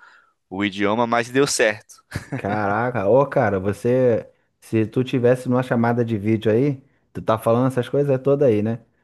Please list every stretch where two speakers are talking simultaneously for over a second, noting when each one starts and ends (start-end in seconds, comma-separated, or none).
none